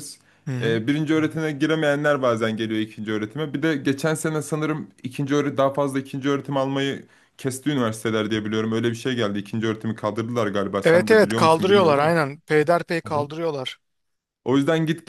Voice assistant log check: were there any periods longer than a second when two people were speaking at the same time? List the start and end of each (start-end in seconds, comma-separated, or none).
10.8-12.4